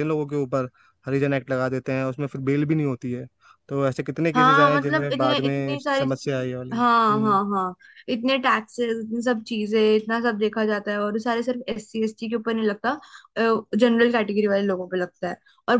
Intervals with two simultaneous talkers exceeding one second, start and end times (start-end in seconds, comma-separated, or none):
4.3-6.0